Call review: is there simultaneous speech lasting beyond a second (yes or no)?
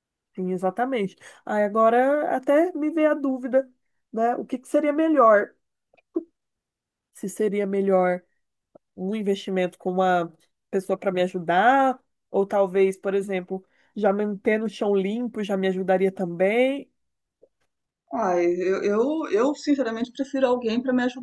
no